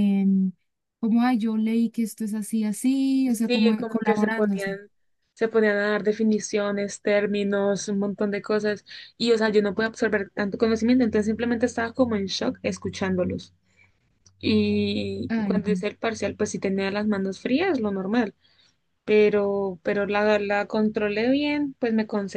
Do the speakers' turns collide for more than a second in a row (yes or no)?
yes